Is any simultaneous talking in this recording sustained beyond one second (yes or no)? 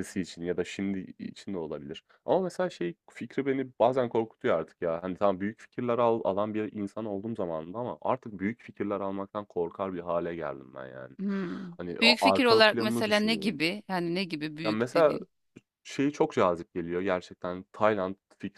yes